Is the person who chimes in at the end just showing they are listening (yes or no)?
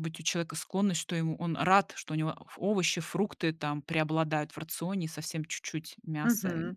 no